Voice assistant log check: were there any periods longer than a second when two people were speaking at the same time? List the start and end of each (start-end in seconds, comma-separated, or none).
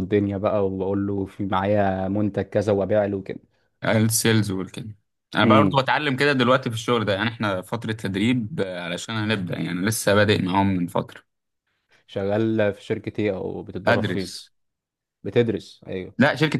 none